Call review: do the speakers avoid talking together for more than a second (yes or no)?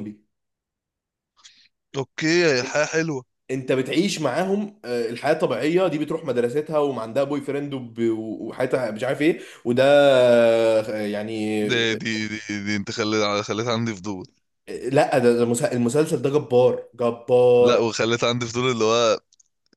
yes